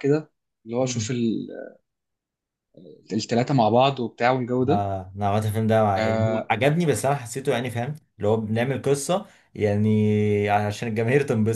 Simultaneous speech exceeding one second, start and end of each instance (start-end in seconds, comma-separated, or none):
none